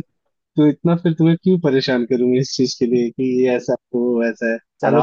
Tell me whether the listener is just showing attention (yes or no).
no